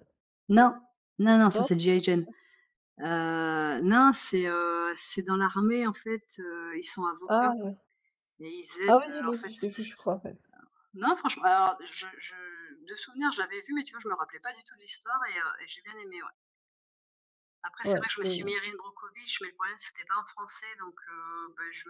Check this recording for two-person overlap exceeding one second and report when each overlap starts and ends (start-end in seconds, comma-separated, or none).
8.8-10.1